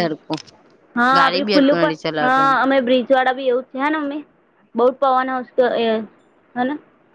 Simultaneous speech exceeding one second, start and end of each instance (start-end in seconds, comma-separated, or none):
1.2-2.5